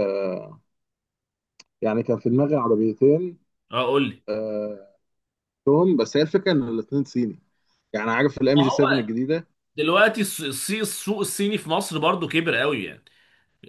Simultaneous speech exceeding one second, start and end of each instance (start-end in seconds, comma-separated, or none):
none